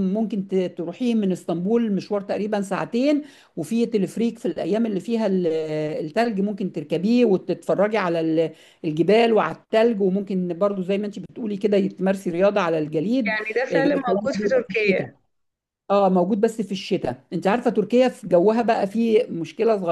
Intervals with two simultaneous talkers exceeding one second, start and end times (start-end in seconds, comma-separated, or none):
13.2-15.1